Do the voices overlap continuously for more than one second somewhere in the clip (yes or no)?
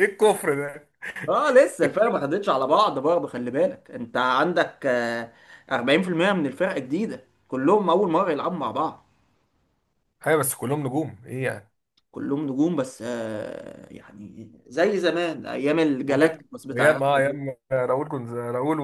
yes